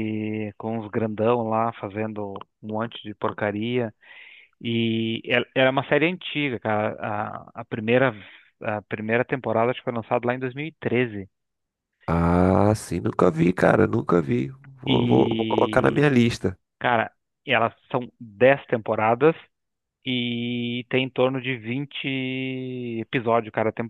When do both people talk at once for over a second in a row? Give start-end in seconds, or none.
14.9-16.1